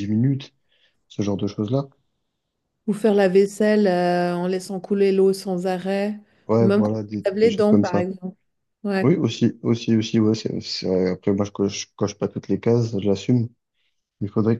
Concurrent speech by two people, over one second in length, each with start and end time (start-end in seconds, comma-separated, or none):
6.6-8.1